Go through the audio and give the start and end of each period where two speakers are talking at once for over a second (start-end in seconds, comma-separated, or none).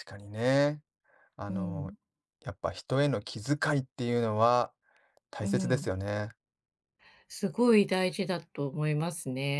none